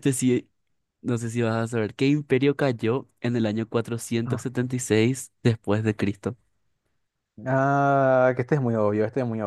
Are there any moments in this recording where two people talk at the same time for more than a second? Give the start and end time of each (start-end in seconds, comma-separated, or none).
none